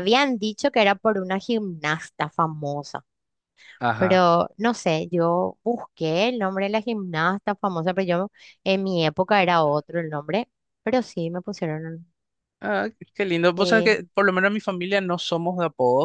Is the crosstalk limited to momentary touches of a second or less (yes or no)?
yes